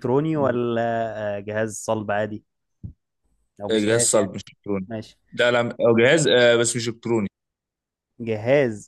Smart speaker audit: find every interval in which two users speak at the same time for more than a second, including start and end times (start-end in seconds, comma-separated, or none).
none